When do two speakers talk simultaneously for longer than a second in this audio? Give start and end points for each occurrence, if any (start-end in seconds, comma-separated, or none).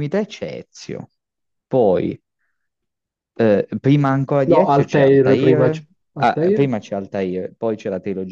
4.5-6.7